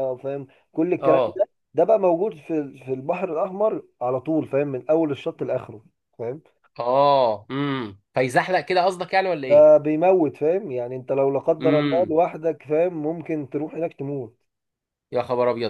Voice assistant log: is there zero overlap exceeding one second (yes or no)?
yes